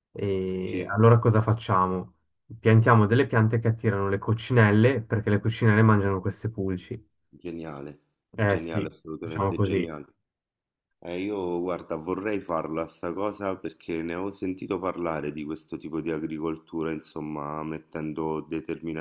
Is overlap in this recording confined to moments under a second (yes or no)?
no